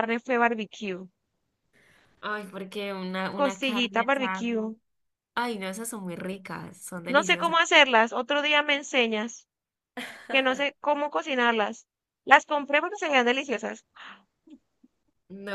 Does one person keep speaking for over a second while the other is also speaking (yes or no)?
yes